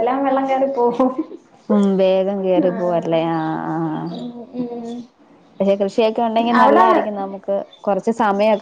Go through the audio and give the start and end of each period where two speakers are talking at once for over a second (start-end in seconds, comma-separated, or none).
none